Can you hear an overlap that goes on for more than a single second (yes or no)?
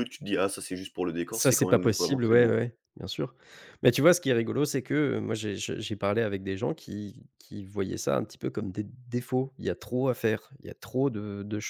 yes